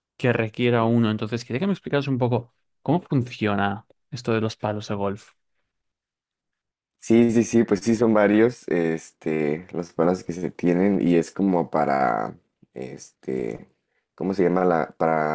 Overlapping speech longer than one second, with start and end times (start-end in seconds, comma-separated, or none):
none